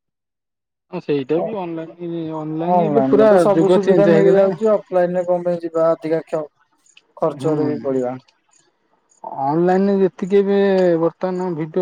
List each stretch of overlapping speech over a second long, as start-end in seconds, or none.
2.7-4.5